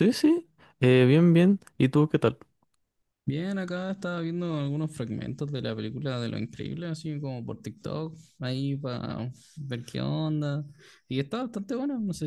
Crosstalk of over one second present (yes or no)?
no